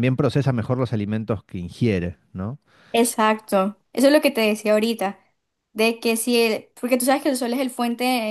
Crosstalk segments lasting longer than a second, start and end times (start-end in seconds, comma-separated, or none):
none